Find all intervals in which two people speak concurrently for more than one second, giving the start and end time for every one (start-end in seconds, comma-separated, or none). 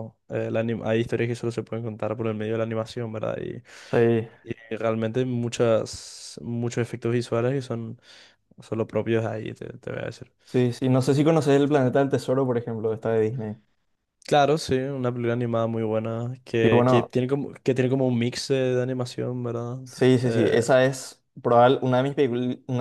none